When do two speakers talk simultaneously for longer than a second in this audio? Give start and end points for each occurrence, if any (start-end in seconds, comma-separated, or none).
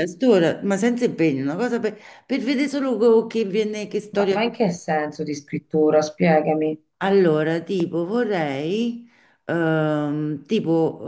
none